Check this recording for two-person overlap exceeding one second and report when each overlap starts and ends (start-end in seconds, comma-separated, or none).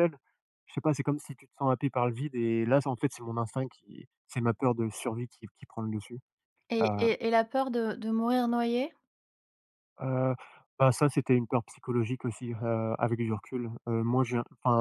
none